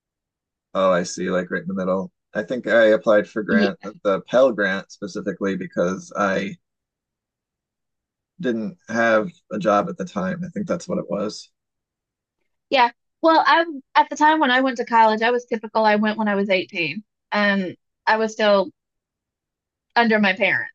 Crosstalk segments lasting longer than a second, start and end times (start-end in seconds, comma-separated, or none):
none